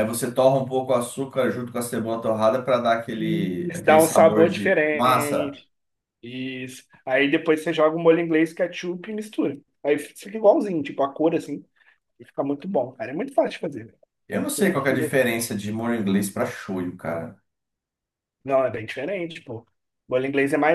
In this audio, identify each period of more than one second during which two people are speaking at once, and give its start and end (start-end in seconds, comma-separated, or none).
3.1-5.6